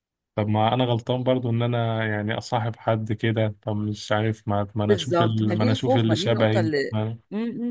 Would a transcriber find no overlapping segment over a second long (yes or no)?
no